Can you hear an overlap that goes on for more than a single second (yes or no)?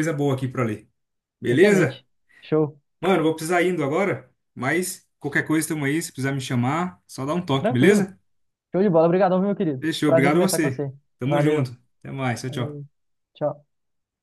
yes